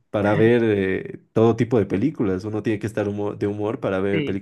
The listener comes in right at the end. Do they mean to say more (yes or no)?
no